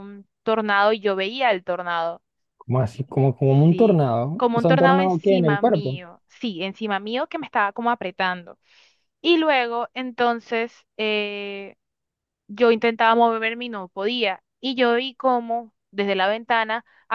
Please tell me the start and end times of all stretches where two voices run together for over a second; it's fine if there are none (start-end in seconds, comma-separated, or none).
3.7-6.0